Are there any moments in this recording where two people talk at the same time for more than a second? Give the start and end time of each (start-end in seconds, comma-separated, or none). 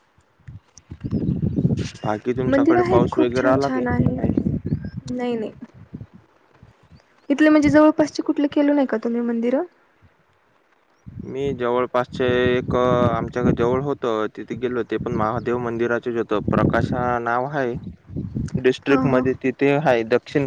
2.5-4.2